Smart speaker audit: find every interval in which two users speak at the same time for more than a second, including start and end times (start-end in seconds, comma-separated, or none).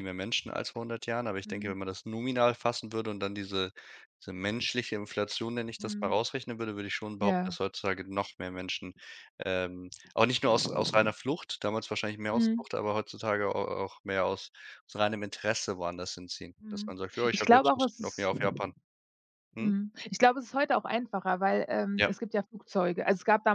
16.6-18.3